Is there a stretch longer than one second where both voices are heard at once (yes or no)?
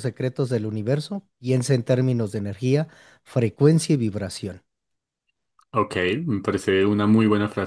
no